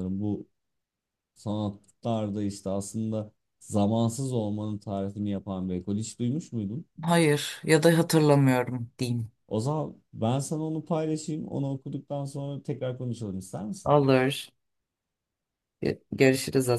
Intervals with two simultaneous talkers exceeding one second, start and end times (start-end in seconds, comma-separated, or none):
none